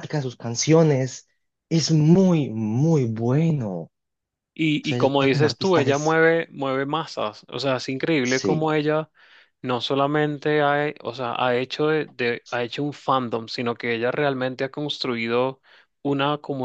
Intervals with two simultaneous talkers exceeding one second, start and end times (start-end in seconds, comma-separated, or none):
4.8-6.2